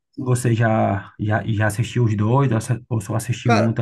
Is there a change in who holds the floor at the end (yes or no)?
yes